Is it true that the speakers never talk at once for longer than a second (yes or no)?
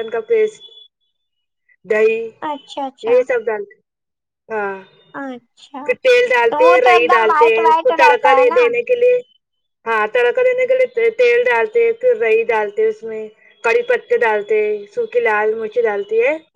no